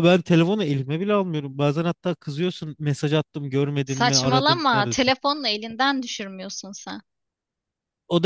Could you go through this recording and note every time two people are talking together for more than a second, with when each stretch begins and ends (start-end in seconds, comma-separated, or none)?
3.9-5.1